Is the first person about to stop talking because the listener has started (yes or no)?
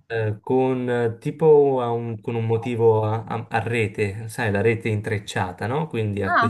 no